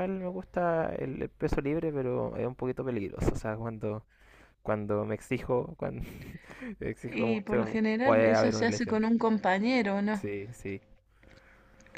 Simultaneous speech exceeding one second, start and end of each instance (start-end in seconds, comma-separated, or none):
7.1-9.0